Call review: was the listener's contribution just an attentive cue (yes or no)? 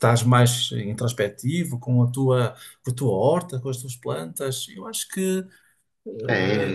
no